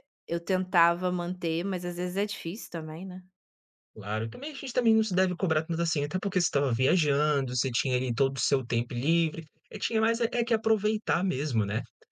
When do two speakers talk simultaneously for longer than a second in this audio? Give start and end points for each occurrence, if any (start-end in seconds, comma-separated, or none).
none